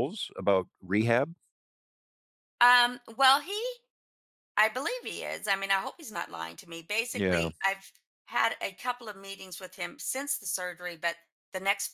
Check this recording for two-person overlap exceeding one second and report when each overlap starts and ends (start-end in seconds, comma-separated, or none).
none